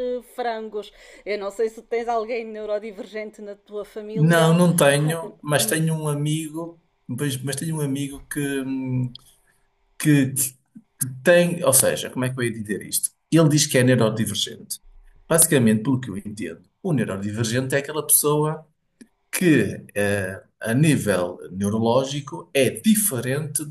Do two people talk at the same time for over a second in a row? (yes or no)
no